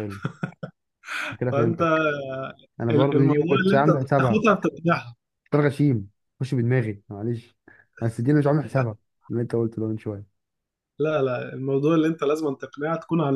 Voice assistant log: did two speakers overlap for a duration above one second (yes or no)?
yes